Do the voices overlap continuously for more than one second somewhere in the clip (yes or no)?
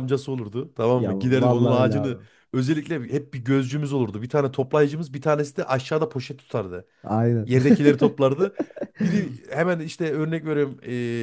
yes